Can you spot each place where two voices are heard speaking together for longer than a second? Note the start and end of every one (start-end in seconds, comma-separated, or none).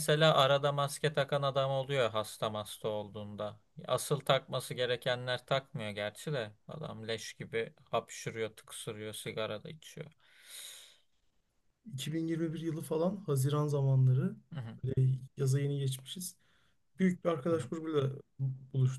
none